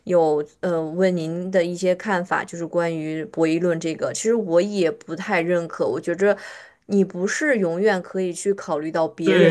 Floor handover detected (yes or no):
yes